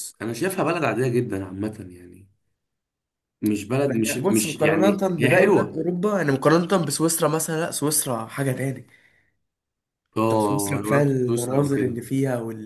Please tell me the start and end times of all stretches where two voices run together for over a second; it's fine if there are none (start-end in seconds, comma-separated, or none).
3.9-5.8, 10.3-12.0